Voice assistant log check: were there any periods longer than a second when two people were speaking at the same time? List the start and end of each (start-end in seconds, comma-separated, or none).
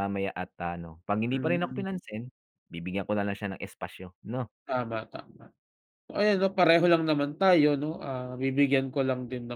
none